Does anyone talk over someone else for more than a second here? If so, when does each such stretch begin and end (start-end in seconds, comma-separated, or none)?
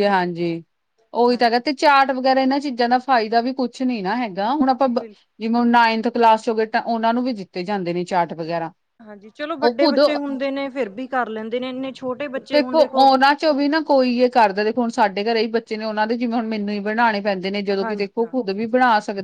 none